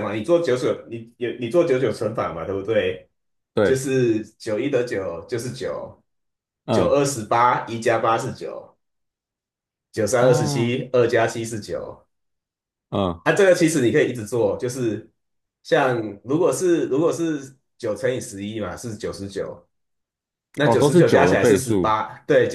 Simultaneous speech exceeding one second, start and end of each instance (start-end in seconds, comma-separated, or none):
20.6-21.9